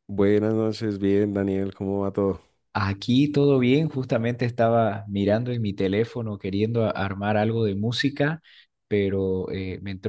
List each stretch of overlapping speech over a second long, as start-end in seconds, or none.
none